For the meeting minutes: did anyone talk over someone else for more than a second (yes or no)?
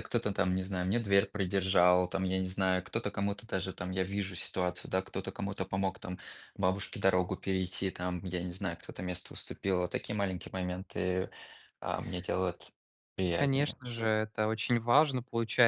no